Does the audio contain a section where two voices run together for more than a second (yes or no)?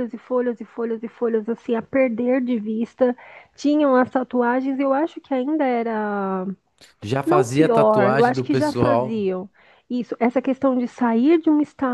yes